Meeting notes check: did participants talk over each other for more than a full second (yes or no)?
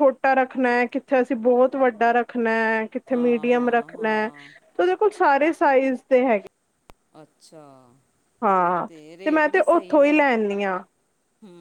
yes